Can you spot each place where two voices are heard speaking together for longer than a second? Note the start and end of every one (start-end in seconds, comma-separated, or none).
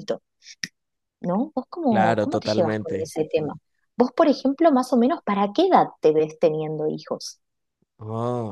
1.9-3.1